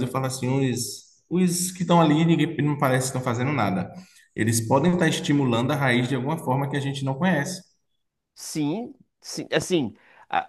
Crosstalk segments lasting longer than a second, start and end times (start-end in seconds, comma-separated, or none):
none